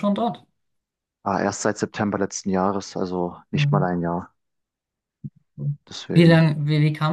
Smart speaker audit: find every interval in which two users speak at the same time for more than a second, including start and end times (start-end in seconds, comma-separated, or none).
none